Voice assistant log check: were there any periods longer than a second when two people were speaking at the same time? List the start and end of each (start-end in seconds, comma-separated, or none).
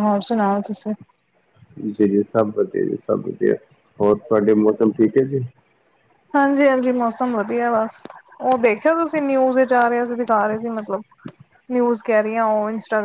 none